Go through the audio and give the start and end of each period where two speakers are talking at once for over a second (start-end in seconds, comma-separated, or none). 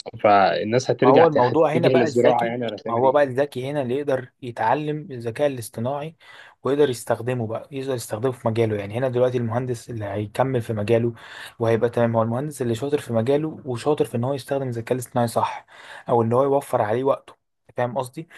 1.0-3.2